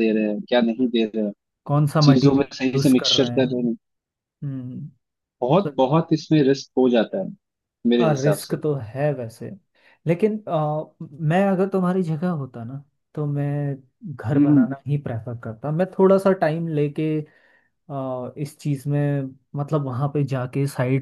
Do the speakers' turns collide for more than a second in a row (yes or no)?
yes